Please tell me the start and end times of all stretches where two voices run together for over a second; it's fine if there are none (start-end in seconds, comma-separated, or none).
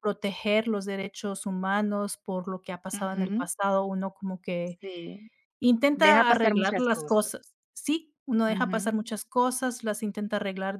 5.9-7.3